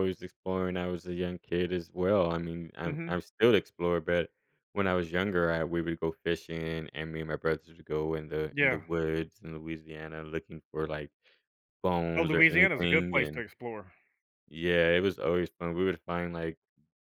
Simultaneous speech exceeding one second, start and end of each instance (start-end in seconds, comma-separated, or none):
12.2-13.4